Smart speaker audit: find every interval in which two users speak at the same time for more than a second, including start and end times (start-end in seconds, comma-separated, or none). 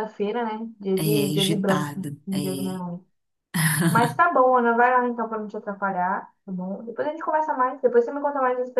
1.0-2.8